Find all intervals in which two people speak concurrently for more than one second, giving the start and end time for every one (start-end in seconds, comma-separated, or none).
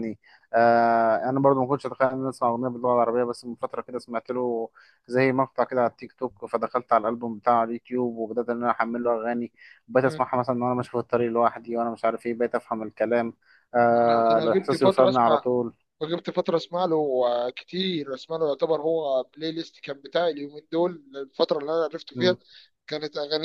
14.0-15.5